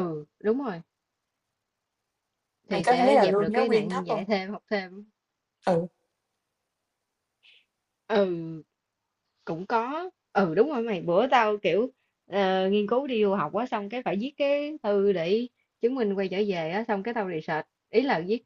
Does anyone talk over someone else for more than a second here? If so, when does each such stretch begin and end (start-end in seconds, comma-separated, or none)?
2.7-4.2